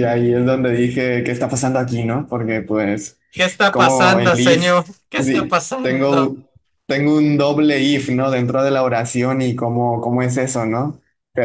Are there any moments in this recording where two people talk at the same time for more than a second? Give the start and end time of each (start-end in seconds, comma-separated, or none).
3.7-6.3